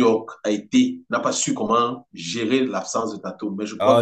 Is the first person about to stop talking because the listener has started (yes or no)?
yes